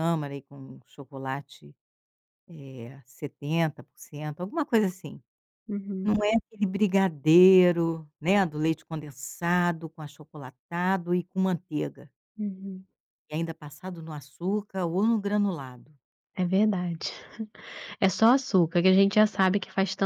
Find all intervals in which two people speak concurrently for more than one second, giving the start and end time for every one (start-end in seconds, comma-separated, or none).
none